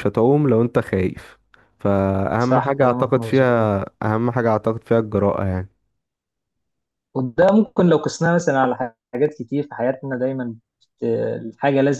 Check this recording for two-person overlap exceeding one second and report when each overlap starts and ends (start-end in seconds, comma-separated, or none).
2.4-3.7